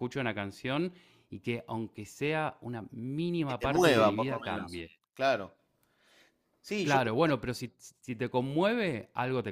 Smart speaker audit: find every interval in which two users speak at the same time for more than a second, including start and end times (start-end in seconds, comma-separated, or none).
3.5-4.9